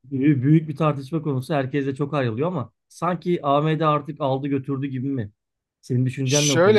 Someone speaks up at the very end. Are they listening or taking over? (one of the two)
taking over